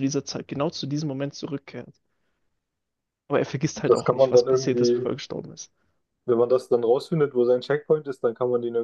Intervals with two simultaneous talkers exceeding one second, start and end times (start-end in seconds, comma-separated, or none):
3.9-5.1